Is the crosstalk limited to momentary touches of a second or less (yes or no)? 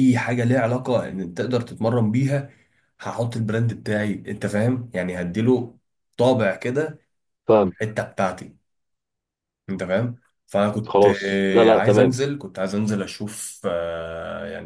no